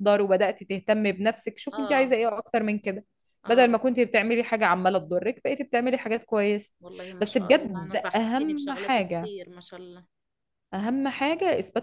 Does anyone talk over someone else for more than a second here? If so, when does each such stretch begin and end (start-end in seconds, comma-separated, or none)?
7.2-9.3